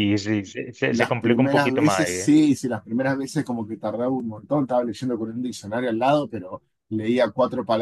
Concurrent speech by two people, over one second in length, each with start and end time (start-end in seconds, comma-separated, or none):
0.9-2.3